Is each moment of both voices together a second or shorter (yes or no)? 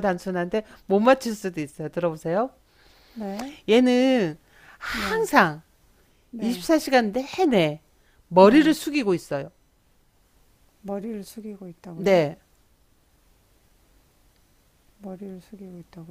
yes